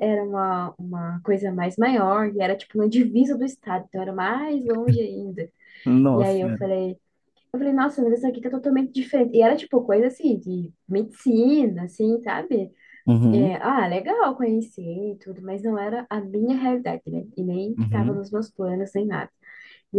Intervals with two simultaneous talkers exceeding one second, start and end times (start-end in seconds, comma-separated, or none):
none